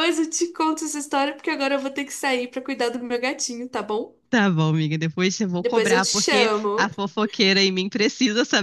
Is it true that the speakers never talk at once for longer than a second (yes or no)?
no